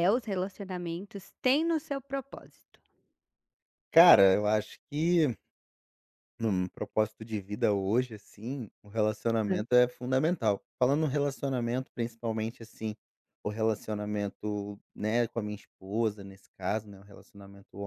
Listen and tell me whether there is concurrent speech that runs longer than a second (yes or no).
no